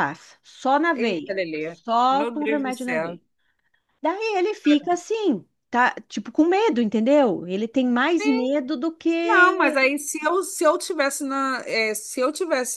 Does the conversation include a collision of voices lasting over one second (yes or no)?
yes